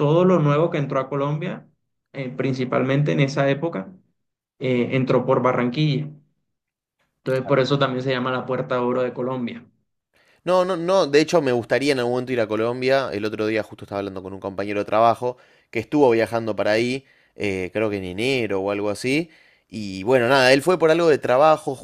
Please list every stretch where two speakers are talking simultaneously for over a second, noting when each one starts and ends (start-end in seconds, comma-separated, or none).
none